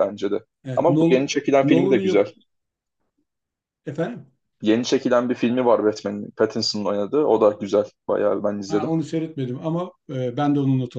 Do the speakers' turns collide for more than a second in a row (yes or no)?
yes